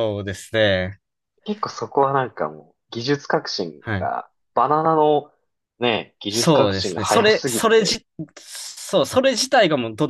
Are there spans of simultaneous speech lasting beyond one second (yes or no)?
yes